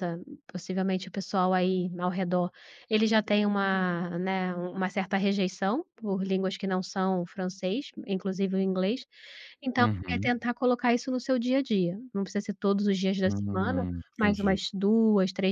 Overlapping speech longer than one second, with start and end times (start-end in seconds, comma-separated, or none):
13.2-14.6